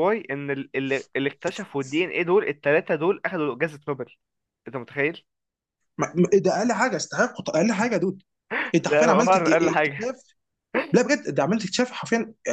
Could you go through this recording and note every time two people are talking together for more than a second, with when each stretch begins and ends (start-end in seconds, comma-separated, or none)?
8.8-10.1